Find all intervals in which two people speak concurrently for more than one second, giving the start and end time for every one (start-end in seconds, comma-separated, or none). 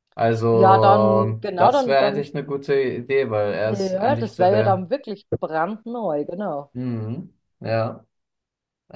0.5-2.2, 3.6-4.9